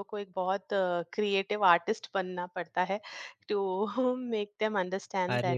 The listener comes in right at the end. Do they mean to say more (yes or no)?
yes